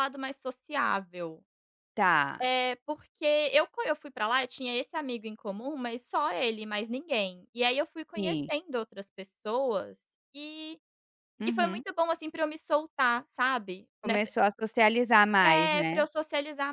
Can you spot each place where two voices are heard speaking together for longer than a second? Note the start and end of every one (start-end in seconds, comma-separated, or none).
none